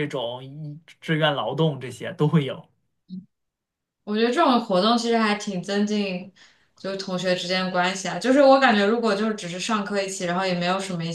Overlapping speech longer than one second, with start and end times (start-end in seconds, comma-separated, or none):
none